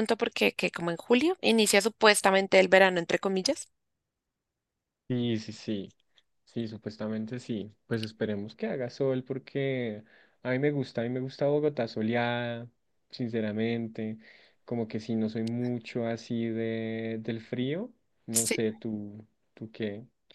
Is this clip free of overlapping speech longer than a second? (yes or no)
yes